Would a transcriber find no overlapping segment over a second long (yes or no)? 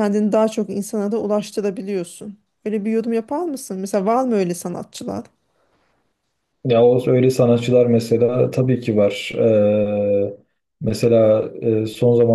yes